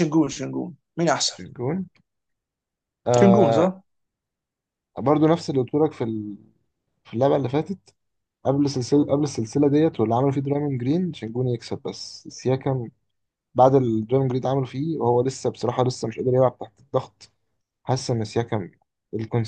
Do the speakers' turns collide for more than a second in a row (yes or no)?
no